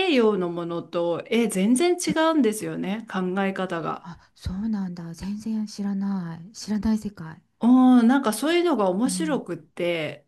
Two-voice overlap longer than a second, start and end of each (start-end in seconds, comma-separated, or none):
none